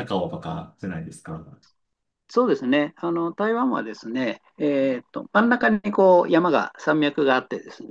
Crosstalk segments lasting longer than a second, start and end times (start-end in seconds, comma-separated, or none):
none